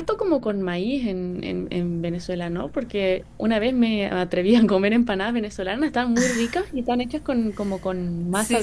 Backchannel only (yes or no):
no